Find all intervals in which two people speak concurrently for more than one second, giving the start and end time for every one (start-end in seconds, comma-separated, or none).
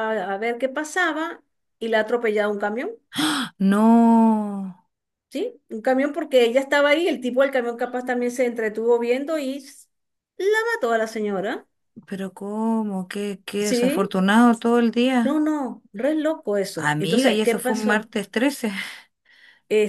16.7-18.1